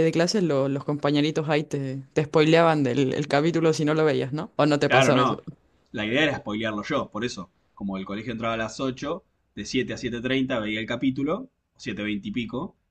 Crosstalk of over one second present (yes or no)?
no